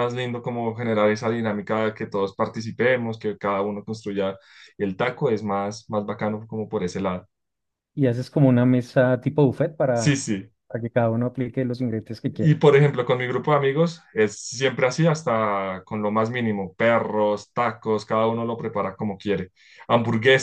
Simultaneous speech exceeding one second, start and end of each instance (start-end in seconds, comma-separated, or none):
none